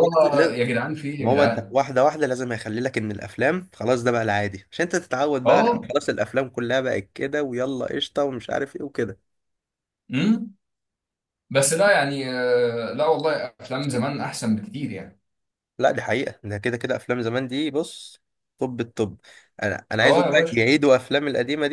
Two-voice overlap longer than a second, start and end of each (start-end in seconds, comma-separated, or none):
none